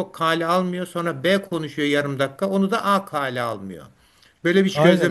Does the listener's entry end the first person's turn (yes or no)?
yes